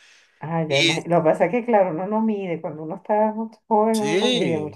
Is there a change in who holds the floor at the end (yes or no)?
yes